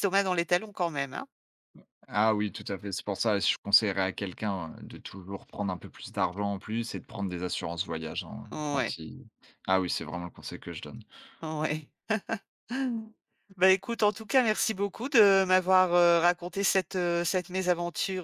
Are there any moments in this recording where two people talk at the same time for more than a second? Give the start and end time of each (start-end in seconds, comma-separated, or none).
none